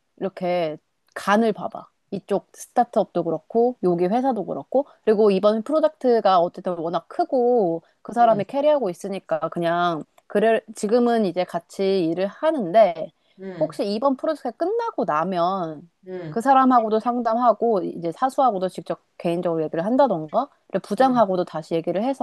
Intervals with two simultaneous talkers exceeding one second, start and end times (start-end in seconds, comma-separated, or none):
none